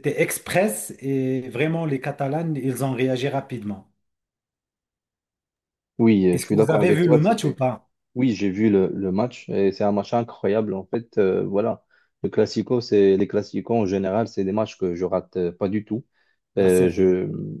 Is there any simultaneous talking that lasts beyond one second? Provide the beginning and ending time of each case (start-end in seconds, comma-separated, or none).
6.3-7.6